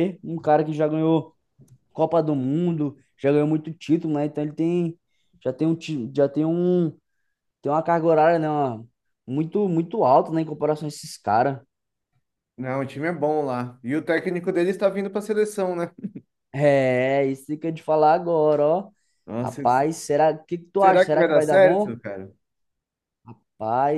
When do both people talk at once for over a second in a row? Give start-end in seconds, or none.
20.8-22.0